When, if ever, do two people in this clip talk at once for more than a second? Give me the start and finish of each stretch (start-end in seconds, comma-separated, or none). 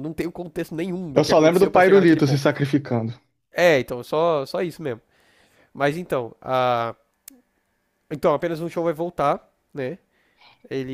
1.1-2.5